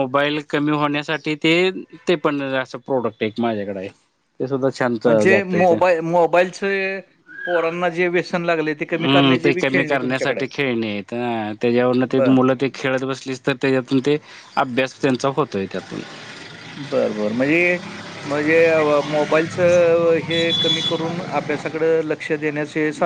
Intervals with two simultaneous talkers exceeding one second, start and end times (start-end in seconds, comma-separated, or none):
8.9-10.5